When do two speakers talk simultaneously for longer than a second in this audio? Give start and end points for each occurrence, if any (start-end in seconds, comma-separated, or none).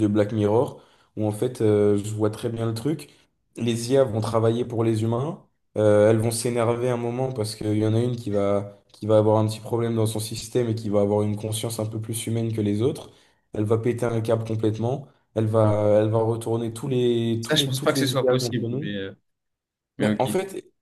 17.4-19.0